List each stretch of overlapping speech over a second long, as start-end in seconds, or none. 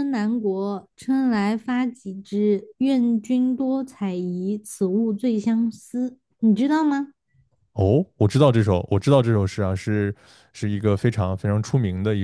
none